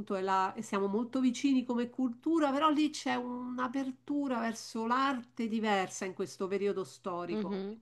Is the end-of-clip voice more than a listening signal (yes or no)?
yes